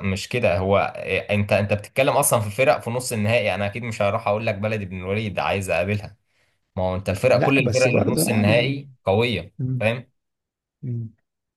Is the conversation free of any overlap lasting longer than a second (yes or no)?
no